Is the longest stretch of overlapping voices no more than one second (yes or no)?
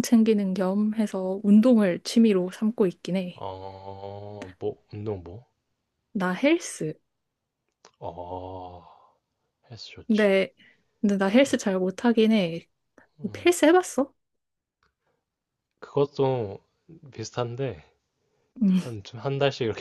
yes